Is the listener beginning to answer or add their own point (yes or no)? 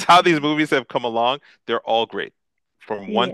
no